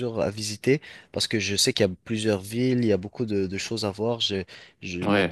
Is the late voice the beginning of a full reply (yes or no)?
no